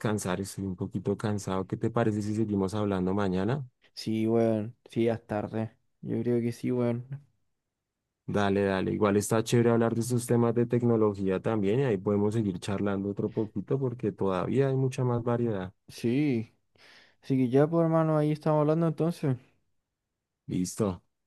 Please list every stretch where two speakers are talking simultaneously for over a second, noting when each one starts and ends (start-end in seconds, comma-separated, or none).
none